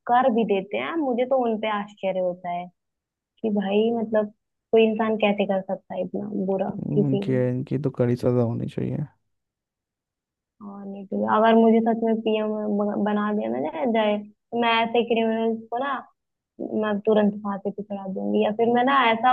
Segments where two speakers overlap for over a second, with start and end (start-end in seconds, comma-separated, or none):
none